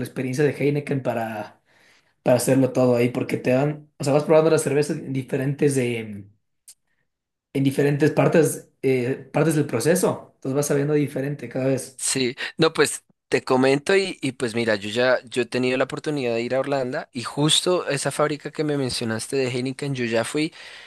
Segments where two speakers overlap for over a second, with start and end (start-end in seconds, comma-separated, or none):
none